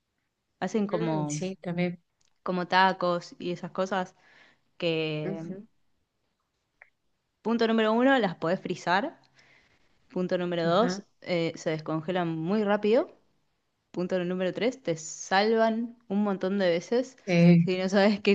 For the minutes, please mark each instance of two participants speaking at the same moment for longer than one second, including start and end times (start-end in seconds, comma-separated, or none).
none